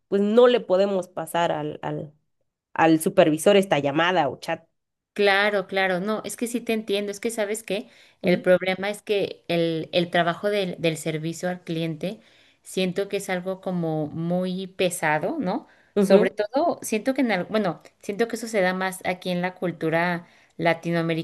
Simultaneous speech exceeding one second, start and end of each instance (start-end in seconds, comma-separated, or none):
none